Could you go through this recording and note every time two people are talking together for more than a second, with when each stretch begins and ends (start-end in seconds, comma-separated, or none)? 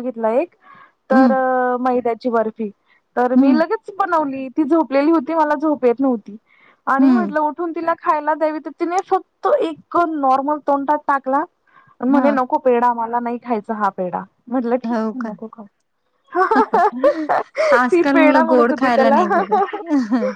17.9-19.6